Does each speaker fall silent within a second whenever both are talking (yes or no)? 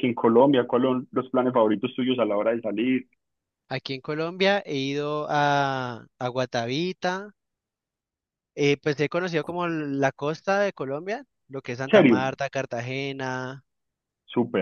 yes